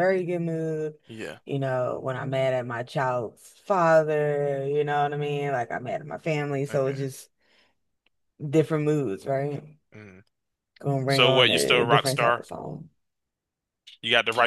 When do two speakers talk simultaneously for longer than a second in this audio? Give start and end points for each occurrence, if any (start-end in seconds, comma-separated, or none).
11.1-12.4